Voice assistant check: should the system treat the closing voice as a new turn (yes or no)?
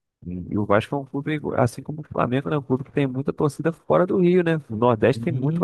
yes